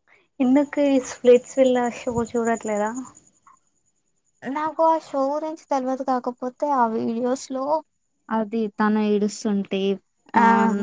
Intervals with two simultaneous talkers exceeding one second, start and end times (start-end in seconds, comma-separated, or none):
none